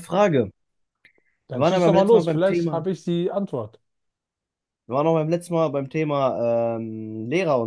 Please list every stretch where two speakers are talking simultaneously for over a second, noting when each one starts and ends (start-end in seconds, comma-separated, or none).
1.5-2.9